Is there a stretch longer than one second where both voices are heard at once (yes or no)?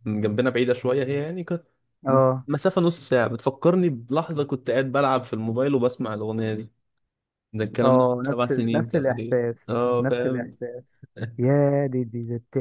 yes